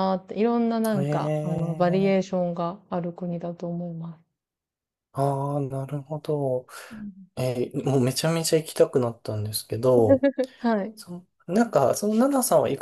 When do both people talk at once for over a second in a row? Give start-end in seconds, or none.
0.9-2.2